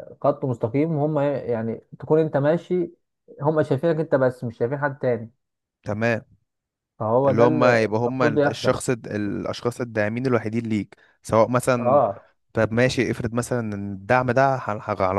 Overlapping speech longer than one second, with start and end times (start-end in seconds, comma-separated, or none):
7.3-8.8